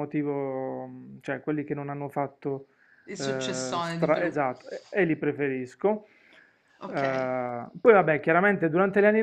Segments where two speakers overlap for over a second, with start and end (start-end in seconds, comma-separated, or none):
3.2-4.4